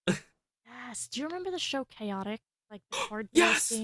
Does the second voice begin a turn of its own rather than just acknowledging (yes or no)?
yes